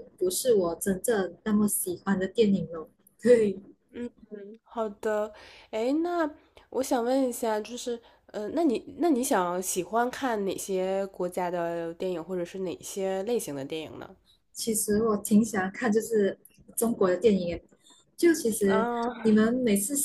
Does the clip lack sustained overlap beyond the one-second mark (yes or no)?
yes